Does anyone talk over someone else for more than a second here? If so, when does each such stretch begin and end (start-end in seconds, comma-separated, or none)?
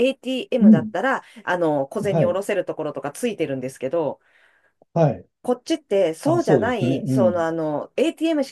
6.2-7.5